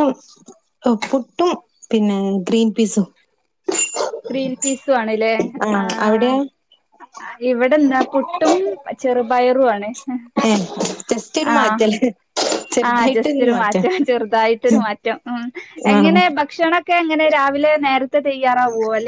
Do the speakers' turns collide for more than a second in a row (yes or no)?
no